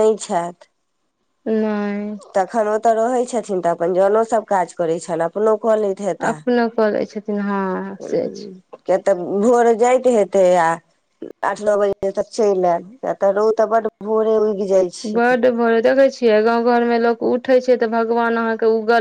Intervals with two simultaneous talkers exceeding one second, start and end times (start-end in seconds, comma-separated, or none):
none